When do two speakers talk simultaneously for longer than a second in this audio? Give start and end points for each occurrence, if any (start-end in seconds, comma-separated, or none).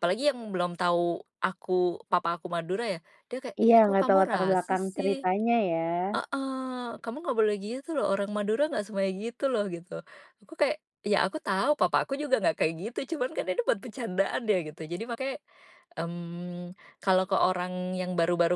3.6-5.2